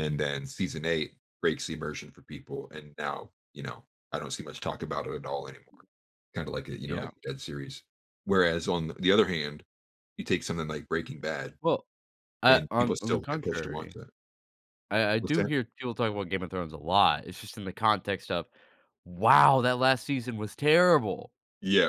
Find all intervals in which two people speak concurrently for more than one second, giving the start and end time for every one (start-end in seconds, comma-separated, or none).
12.5-14.0